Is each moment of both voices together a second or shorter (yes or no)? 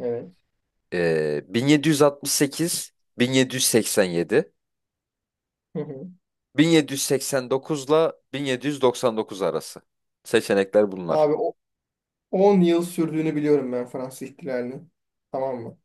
yes